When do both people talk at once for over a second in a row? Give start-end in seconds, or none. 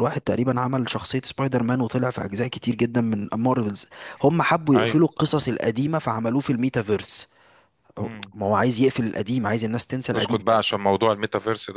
none